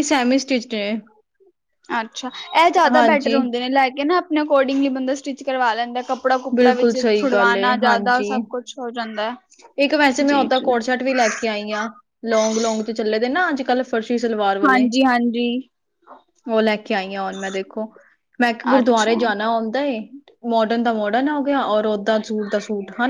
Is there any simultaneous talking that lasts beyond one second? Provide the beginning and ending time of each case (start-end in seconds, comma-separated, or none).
6.5-8.3